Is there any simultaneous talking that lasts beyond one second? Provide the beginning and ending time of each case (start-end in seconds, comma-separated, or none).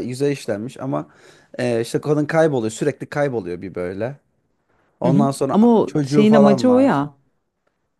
5.0-7.1